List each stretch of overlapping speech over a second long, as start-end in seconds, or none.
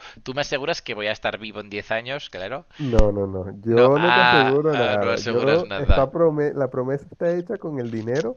3.8-6.1